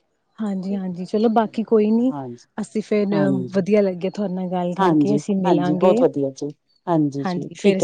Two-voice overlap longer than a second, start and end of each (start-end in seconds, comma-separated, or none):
4.8-6.0